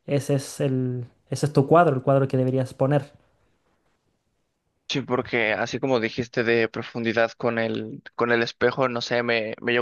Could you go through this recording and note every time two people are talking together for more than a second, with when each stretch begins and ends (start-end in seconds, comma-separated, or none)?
none